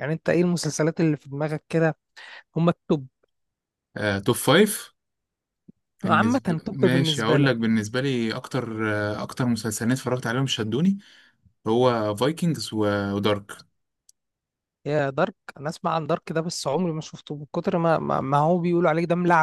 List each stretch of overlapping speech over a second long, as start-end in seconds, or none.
6.0-7.5